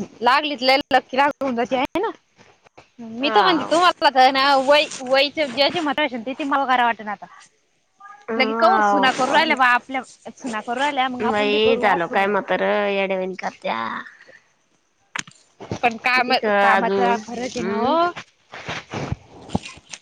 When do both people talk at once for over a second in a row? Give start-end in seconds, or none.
16.1-17.9